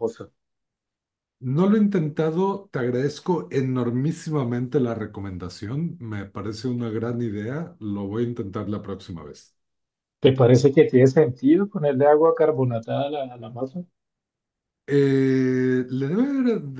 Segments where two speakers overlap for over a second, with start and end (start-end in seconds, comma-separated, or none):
none